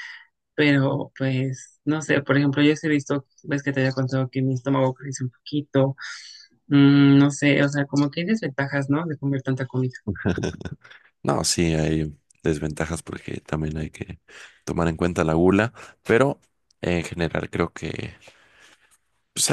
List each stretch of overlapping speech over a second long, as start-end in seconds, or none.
none